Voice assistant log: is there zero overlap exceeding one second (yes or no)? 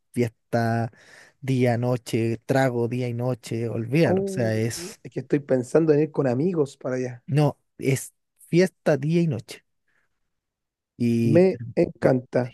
yes